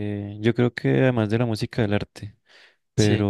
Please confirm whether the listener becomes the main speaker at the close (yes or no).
no